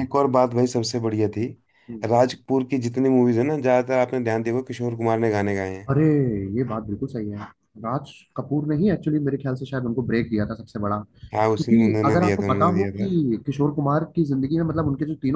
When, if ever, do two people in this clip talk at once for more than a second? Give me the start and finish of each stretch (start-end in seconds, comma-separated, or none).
11.4-13.1